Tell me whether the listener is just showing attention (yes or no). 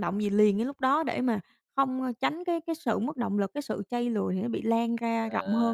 no